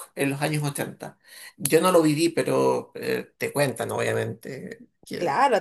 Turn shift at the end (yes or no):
yes